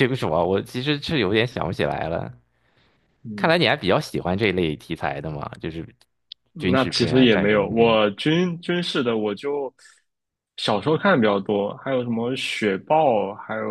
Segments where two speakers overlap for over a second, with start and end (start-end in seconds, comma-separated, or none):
6.7-8.0